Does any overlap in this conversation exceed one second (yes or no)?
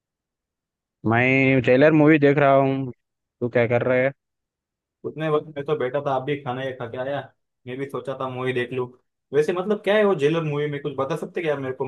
no